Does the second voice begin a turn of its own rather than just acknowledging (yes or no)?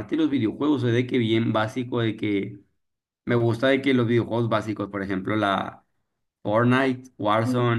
no